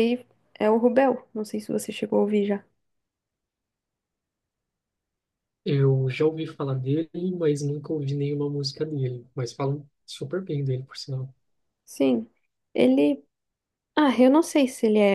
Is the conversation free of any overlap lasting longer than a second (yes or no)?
yes